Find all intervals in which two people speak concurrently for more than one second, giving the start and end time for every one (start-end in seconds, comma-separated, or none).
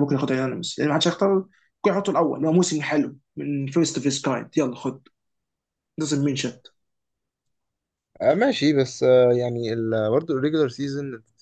none